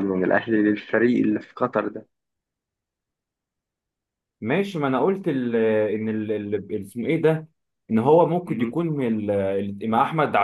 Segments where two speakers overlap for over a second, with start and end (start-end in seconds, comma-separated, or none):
none